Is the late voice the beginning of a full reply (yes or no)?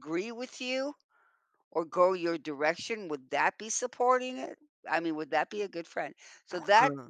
no